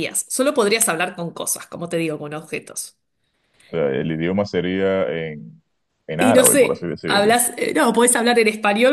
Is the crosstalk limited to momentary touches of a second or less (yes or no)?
no